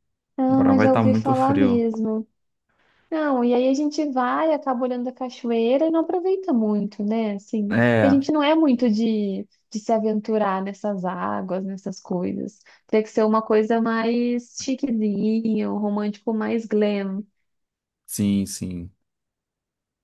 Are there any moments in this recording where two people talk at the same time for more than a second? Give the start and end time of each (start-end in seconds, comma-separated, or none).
0.5-1.8